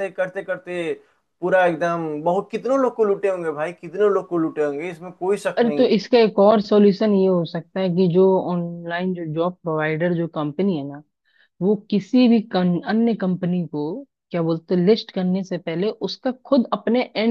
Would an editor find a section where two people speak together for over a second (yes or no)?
no